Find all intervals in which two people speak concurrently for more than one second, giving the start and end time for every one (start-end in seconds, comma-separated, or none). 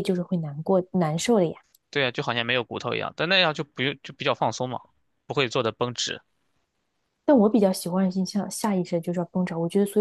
none